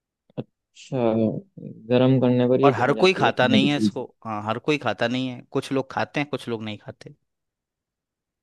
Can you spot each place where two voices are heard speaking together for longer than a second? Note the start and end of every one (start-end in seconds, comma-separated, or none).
2.6-4.0